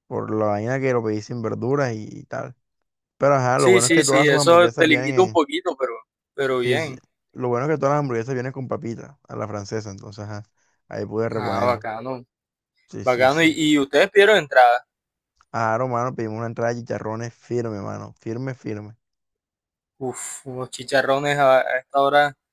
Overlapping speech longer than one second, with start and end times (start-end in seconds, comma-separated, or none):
3.6-5.4